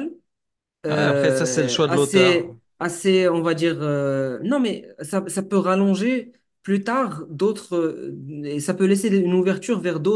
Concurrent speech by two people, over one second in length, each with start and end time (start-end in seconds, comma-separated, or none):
0.9-2.5